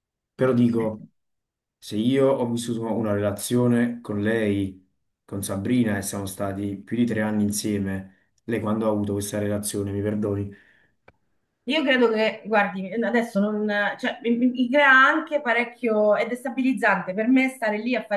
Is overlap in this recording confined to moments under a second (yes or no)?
yes